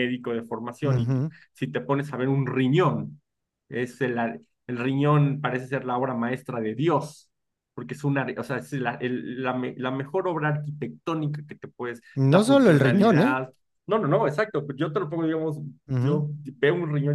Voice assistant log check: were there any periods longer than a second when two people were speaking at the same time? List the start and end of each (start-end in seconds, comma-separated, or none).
12.2-13.4